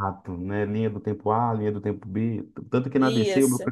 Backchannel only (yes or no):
yes